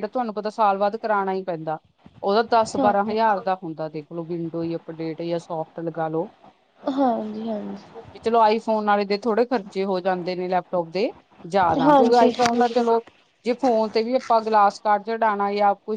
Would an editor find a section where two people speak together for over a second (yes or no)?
no